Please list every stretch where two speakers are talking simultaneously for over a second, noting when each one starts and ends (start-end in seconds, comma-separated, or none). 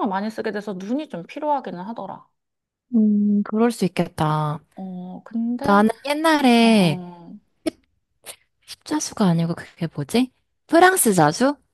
none